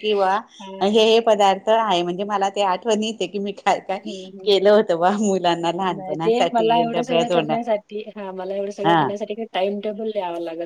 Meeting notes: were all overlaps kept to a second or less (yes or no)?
no